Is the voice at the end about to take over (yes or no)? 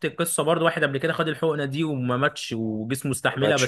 no